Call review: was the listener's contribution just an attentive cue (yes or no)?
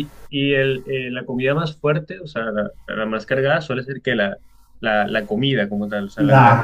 no